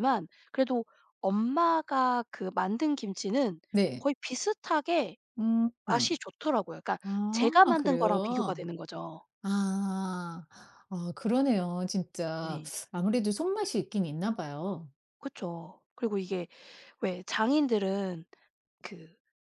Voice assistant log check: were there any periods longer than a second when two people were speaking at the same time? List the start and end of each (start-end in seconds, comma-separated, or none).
7.0-8.6